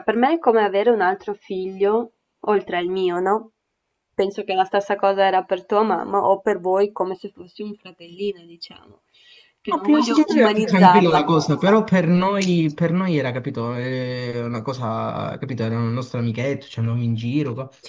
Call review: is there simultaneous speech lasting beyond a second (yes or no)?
yes